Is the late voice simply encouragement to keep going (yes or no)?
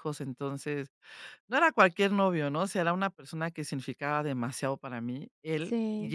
yes